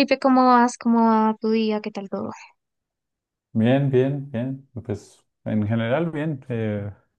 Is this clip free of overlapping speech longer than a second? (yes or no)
yes